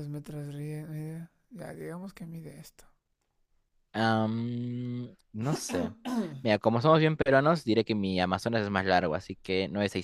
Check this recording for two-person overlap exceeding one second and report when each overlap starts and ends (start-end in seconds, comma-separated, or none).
none